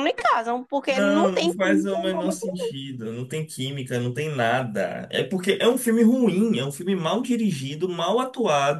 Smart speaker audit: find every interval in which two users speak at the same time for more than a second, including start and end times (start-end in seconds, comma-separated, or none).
0.9-2.5